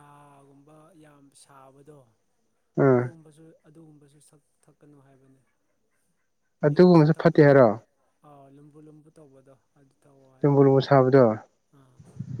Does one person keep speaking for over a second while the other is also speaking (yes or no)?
no